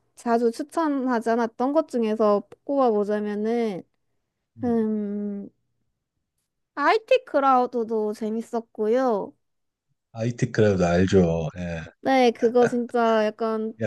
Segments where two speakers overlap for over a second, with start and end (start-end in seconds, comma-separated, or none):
none